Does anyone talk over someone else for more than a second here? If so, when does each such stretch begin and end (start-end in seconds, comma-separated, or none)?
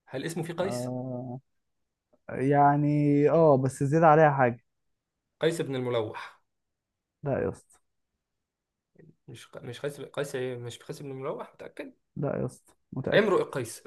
none